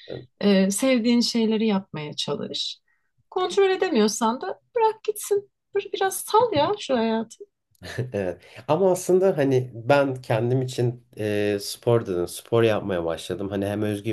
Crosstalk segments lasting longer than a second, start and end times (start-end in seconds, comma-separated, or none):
none